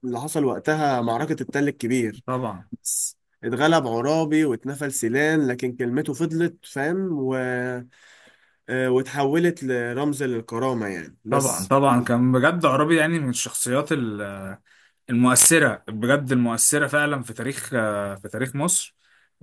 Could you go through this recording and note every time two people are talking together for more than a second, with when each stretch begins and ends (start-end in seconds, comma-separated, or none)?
none